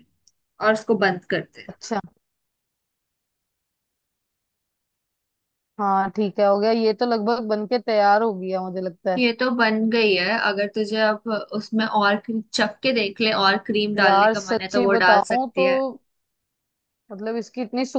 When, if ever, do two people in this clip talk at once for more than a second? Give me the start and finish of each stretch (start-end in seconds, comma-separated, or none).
14.0-15.7